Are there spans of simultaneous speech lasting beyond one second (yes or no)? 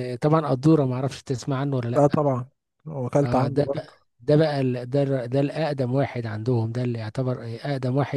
no